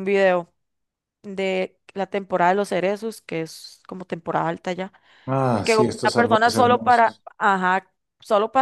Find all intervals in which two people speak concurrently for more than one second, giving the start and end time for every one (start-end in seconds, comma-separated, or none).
5.6-7.2